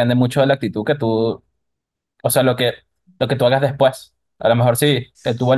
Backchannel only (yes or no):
yes